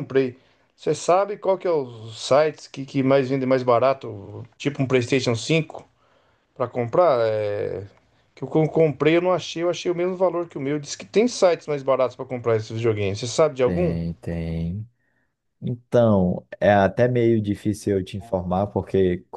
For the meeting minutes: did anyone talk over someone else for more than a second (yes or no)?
no